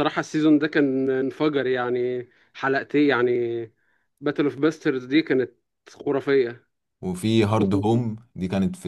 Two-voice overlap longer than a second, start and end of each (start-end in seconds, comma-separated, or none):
none